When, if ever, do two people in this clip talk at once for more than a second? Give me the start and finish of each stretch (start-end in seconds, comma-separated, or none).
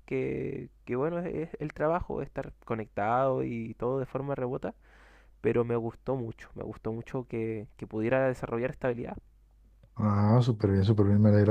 none